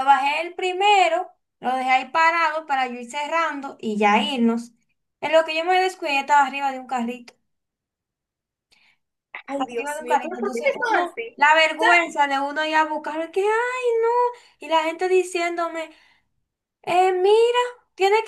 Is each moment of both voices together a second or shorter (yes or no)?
no